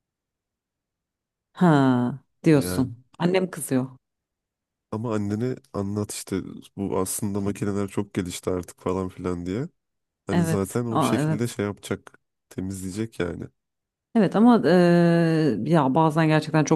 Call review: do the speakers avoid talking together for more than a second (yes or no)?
no